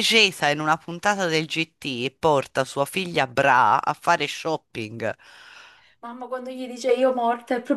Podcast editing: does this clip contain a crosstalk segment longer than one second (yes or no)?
no